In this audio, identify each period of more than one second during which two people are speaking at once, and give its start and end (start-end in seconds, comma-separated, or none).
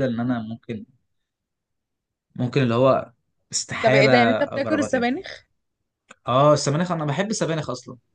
3.8-5.1